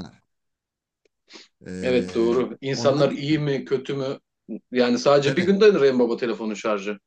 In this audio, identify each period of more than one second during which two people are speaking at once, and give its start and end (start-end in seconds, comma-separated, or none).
1.8-3.5